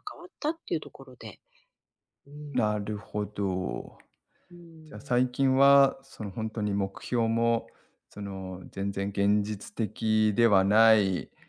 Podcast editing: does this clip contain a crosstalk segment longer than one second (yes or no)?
no